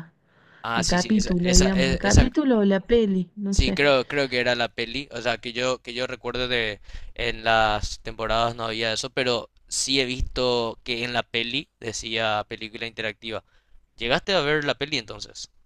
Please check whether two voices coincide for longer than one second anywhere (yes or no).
yes